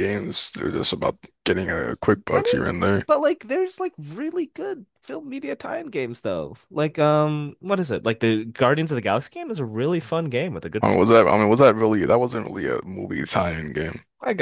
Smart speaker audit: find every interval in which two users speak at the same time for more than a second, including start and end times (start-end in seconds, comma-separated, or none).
none